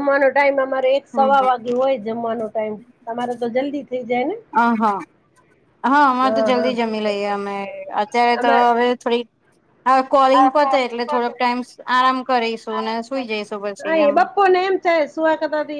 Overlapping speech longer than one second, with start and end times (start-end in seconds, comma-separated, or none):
none